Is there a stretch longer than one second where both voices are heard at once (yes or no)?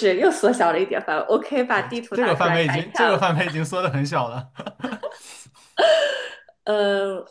yes